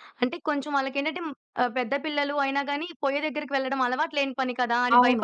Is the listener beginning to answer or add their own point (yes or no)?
yes